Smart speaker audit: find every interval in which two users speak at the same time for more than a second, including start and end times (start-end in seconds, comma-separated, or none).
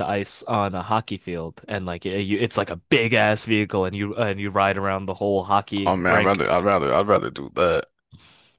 none